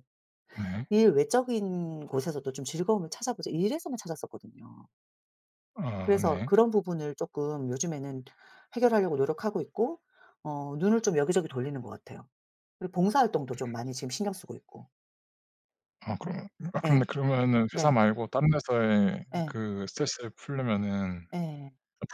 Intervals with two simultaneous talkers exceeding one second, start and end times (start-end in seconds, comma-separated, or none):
none